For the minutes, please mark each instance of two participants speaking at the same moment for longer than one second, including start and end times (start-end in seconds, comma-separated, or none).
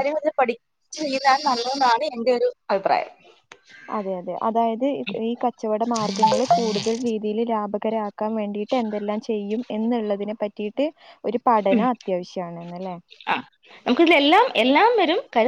none